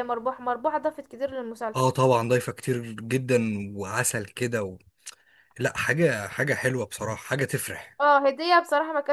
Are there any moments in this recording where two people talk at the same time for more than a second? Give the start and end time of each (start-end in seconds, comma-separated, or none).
none